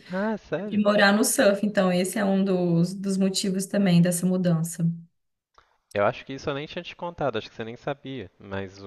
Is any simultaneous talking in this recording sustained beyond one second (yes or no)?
no